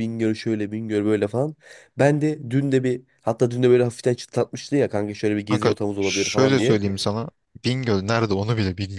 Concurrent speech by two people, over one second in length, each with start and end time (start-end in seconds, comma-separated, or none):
5.5-6.8